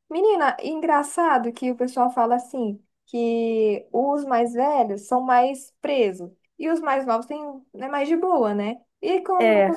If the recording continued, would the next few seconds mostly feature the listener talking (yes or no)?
no